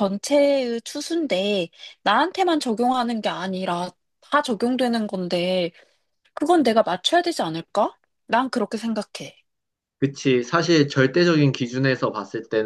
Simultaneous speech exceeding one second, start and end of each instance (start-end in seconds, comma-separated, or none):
none